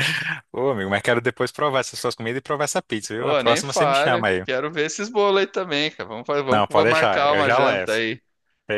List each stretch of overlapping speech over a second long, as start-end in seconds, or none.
3.2-4.5, 6.5-8.0